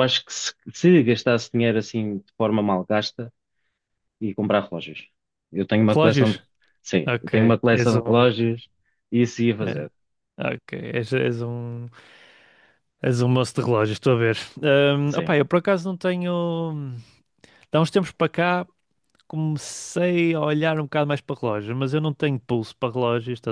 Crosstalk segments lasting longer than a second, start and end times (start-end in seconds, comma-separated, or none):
7.1-8.6